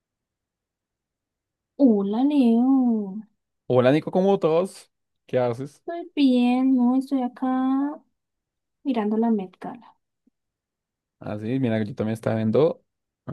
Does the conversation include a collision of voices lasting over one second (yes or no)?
no